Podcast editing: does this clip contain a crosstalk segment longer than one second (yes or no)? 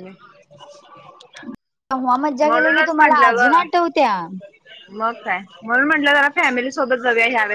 yes